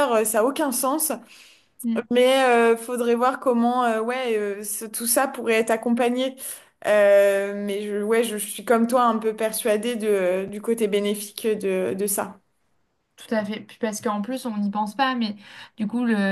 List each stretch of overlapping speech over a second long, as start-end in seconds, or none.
none